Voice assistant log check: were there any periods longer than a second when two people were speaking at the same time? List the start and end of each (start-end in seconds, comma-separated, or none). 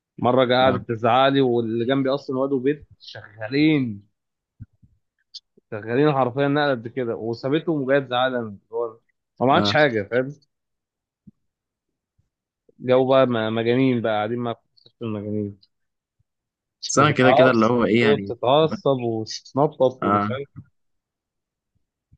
16.9-18.7